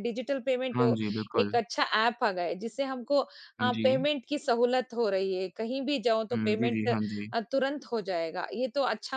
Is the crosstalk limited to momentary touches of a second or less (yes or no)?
yes